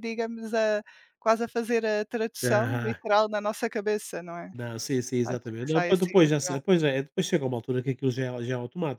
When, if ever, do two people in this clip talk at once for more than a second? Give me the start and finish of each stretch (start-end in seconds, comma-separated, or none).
5.2-6.6